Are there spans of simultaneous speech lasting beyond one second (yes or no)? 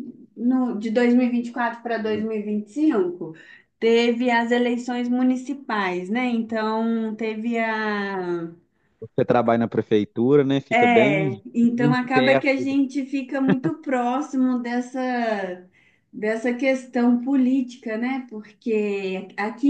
yes